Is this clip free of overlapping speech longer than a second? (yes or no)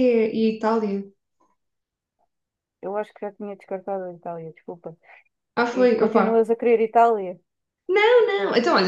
yes